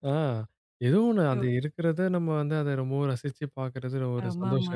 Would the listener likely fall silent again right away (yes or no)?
no